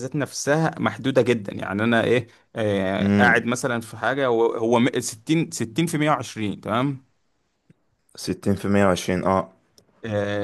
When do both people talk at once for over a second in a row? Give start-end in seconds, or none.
none